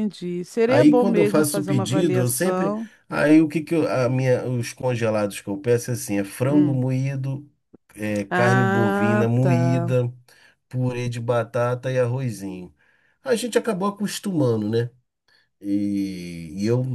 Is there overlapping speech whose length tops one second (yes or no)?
yes